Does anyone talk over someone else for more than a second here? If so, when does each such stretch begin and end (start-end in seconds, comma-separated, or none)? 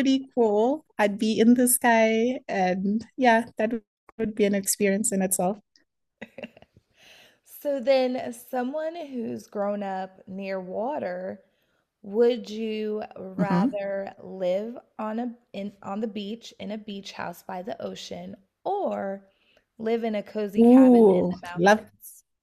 20.6-21.9